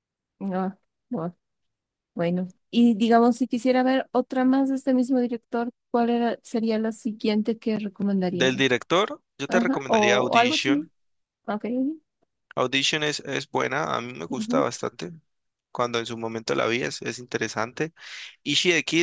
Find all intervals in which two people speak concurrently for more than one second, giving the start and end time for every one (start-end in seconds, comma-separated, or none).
9.5-10.9